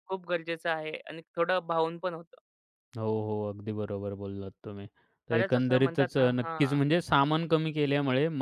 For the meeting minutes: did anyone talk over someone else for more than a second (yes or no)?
yes